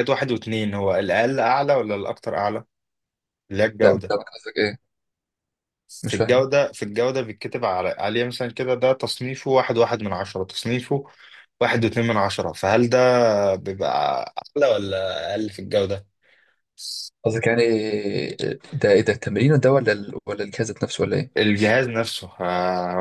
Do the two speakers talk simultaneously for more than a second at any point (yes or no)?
no